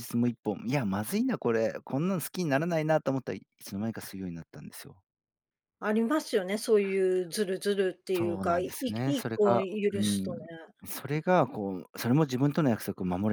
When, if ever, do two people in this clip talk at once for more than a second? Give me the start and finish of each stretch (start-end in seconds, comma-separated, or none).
8.1-10.5